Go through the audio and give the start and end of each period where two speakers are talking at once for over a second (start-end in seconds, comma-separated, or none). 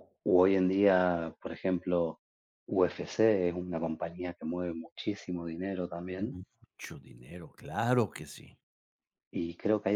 none